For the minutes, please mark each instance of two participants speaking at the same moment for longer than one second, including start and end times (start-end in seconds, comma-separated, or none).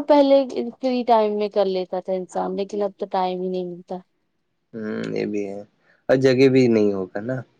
none